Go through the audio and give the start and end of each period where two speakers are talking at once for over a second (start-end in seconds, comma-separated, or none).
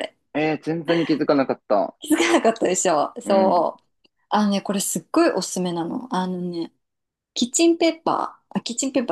none